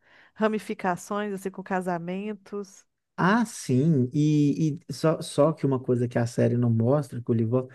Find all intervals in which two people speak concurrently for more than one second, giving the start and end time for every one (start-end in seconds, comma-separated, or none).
none